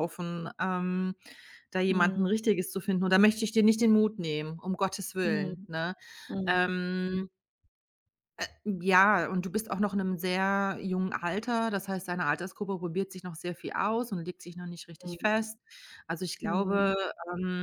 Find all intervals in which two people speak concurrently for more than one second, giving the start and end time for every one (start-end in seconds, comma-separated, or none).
none